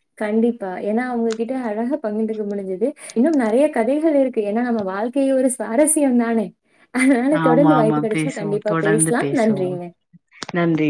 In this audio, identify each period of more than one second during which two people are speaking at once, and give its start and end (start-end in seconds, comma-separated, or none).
7.4-9.7